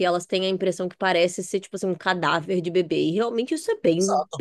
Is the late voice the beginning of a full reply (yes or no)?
yes